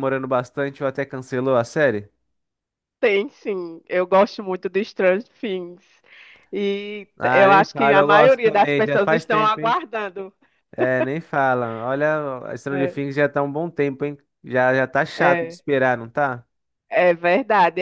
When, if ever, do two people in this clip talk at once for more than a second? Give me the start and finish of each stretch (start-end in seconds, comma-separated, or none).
7.2-9.8